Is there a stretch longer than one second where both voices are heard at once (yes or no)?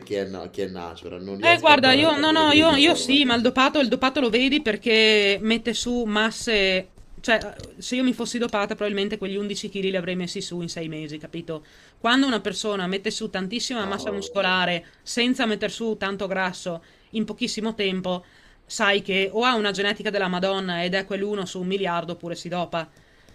yes